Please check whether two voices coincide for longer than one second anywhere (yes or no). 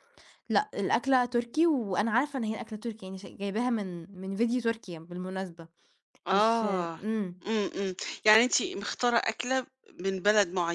no